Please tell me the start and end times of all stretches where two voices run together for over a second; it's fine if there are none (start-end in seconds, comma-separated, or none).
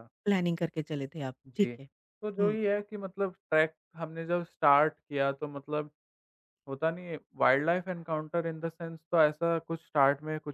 none